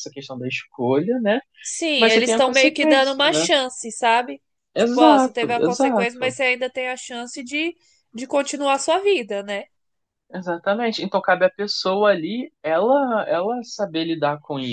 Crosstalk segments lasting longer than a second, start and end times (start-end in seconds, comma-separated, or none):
2.0-3.5, 4.8-6.4